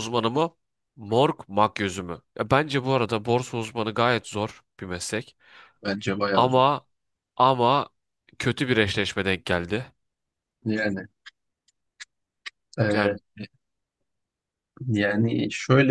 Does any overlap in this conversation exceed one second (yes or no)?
no